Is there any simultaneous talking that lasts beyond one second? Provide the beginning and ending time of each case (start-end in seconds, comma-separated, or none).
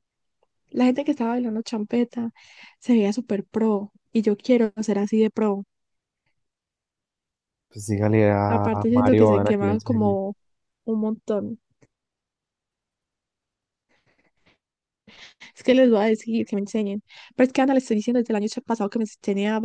8.5-10.2